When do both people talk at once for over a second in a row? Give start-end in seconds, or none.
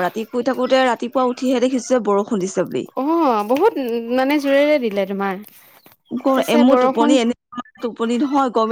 none